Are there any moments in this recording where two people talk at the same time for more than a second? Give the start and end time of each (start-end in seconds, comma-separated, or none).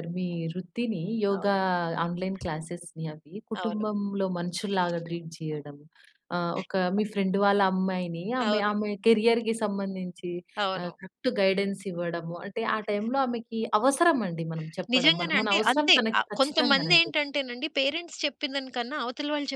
14.9-17.1